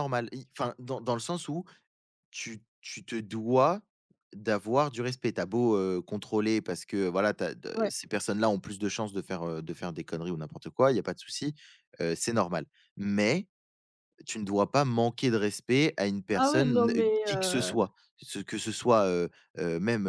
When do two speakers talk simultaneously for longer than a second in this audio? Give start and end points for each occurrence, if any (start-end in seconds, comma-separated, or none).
16.3-17.8